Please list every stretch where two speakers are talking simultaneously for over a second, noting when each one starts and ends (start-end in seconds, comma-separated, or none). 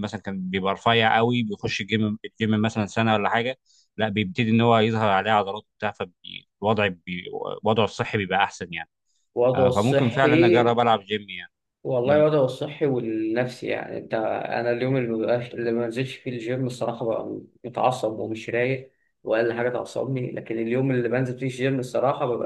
9.5-10.7